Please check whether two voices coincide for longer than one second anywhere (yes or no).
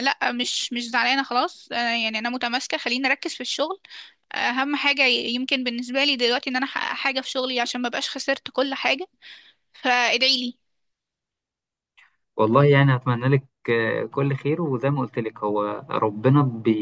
no